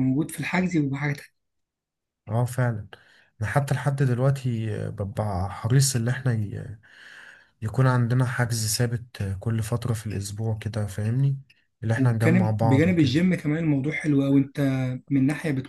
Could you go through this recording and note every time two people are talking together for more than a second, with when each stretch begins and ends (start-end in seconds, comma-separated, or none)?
12.0-13.2